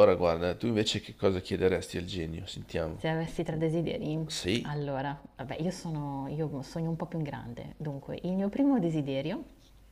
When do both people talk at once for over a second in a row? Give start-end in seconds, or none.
none